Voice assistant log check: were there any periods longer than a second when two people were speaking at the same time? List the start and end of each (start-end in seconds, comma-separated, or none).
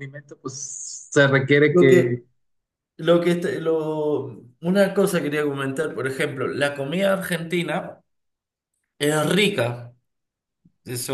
none